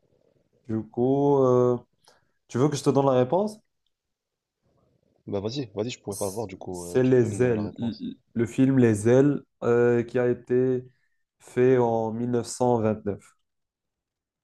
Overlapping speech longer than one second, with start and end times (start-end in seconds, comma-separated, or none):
6.1-8.0